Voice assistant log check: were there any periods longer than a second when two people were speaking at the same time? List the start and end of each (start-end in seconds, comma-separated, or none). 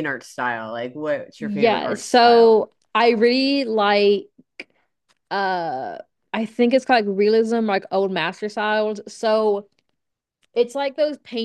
1.4-2.6